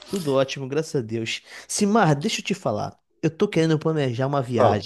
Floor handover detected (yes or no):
no